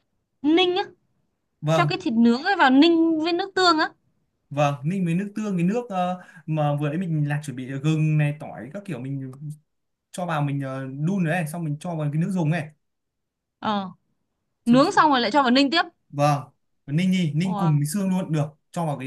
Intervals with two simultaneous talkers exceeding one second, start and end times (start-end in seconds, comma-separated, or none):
none